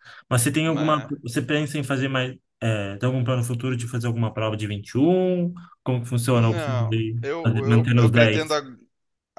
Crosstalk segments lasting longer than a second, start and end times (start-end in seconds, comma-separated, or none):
6.3-8.5